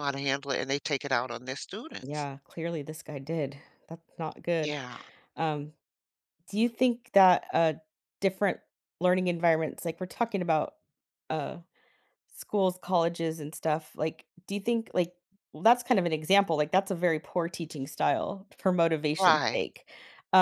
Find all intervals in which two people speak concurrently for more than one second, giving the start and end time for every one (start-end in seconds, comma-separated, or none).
none